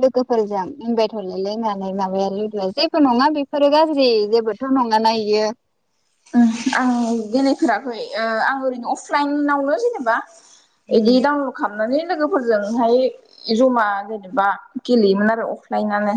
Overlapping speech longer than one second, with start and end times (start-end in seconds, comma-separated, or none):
none